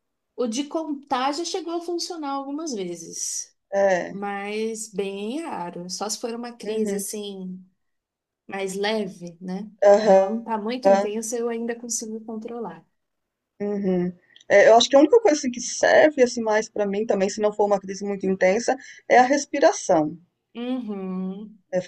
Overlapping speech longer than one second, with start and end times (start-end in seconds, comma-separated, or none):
9.9-11.1